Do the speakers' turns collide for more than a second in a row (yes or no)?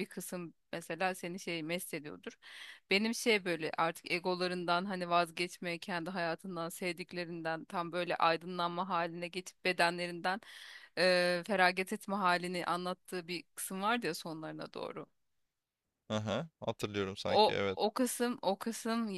no